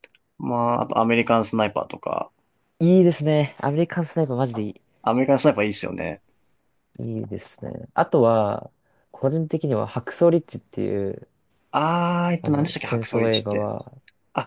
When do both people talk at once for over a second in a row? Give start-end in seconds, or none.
12.4-13.7